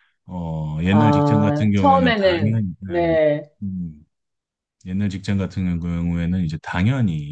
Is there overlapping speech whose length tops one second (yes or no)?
yes